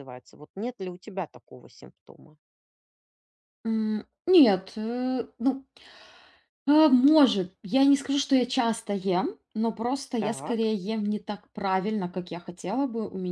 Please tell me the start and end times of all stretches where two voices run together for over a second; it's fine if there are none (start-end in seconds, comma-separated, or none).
none